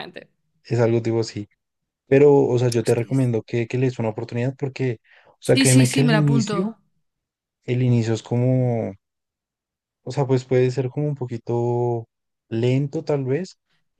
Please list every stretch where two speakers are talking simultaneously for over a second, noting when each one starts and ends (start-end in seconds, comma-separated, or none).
5.4-6.8